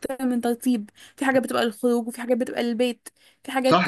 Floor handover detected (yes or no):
yes